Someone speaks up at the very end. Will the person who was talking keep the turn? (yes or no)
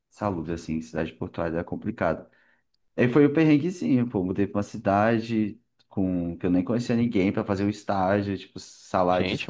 no